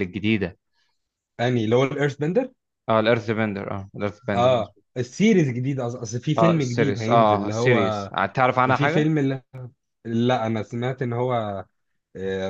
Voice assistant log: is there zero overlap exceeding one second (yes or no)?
no